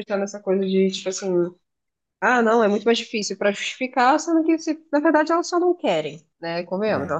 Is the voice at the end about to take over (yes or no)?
no